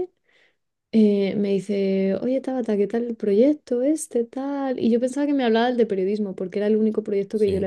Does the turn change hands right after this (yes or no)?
no